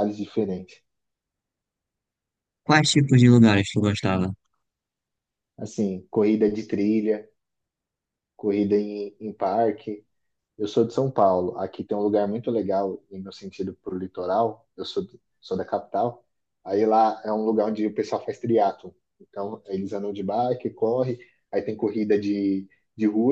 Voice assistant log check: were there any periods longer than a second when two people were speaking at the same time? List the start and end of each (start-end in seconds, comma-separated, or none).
none